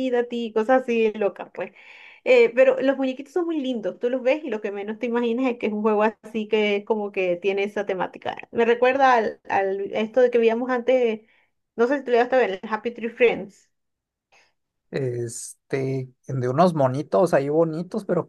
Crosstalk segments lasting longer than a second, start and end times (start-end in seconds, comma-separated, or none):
none